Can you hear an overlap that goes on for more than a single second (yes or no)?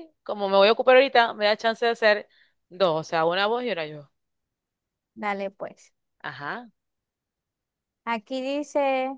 no